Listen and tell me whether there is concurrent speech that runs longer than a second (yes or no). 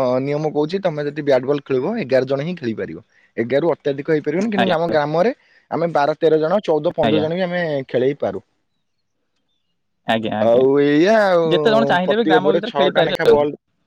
yes